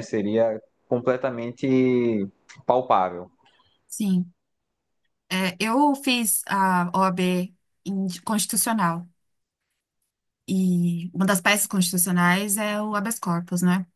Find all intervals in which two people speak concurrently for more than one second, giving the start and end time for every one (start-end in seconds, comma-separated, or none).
none